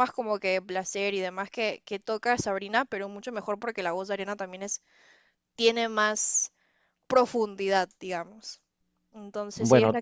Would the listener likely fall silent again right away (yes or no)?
yes